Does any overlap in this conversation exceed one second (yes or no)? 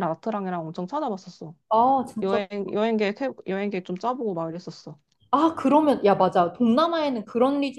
no